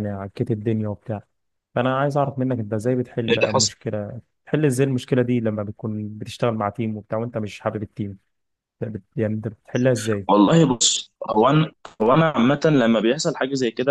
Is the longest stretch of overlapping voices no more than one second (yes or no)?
yes